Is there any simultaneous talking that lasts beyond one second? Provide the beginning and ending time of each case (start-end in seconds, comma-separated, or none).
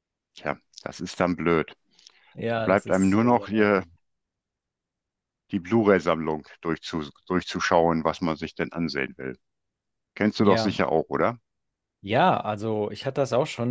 2.5-3.8